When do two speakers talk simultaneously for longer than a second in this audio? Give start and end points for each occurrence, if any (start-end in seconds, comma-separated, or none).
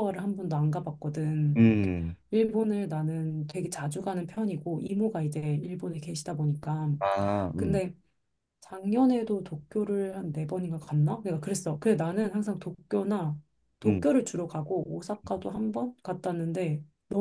none